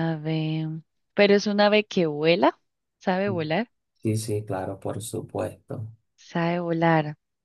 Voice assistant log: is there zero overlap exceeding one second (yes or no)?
yes